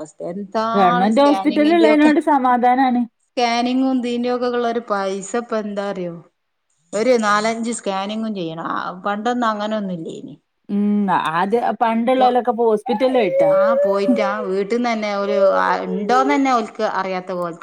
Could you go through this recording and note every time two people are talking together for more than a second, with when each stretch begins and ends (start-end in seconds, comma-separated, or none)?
0.8-2.1